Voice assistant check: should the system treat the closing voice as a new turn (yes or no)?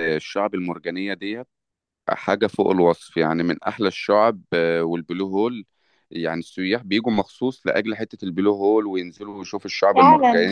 no